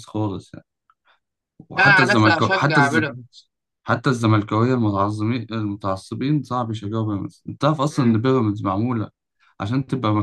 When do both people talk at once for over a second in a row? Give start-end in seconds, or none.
1.8-3.1